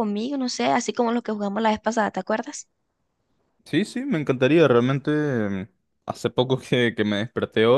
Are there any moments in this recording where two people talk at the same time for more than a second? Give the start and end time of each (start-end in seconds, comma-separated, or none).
none